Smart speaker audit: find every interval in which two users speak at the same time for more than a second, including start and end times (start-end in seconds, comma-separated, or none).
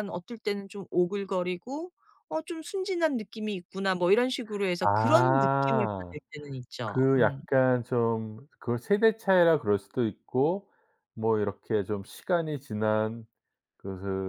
4.8-6.2